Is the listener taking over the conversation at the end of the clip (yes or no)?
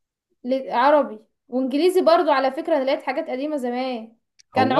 no